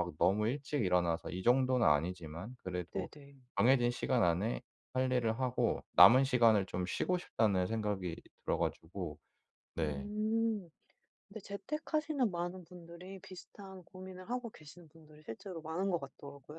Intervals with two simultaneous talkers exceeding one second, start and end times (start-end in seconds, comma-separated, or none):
none